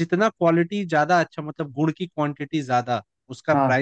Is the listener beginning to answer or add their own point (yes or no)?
no